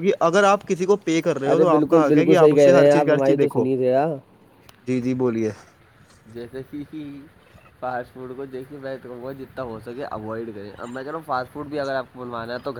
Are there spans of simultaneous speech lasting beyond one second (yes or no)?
yes